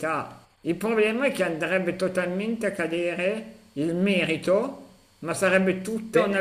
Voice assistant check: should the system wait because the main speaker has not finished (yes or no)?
yes